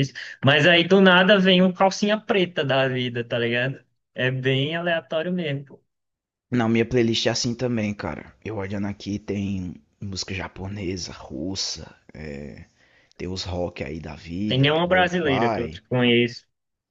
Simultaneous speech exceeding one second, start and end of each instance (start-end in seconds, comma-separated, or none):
14.5-15.8